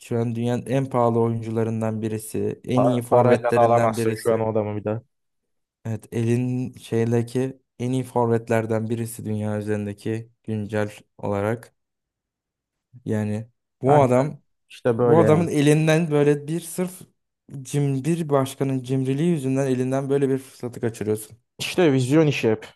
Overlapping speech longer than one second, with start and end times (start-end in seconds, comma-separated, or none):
2.8-4.5